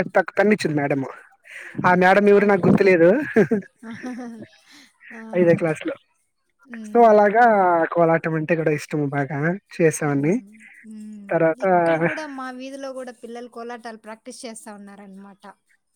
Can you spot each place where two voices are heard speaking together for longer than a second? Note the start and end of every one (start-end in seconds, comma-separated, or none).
none